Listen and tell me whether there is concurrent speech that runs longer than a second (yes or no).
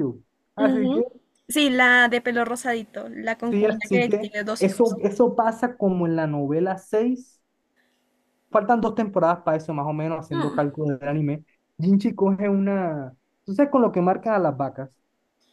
yes